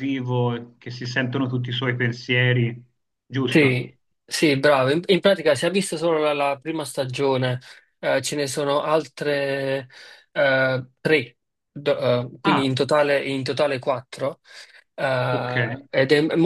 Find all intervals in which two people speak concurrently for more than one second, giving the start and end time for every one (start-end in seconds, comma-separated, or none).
none